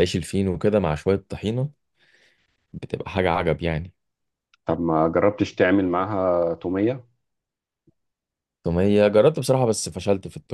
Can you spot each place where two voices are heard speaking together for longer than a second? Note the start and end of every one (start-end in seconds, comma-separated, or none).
none